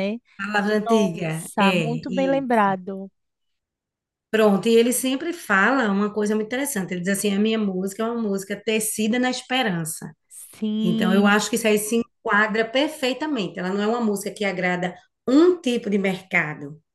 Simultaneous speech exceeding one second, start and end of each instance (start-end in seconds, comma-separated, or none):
0.8-2.5